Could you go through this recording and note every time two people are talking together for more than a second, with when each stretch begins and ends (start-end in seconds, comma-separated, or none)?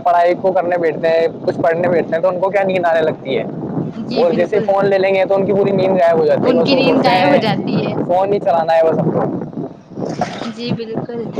6.5-7.9